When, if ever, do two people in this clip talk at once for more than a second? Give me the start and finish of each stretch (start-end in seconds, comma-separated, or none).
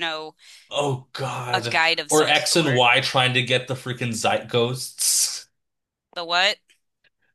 1.5-2.8